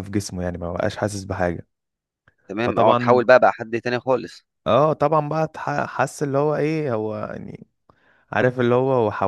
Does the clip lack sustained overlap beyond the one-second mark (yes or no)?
yes